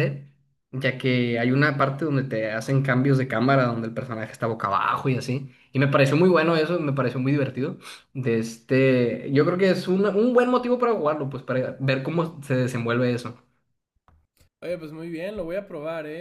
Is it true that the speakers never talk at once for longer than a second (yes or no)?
yes